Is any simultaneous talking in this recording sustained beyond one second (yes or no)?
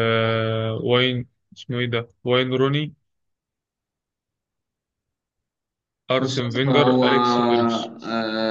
yes